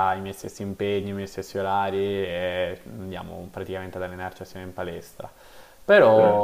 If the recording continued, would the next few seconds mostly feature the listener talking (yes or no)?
no